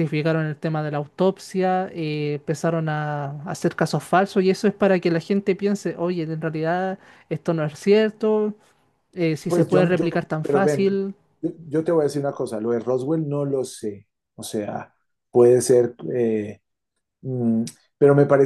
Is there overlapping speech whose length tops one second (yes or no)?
yes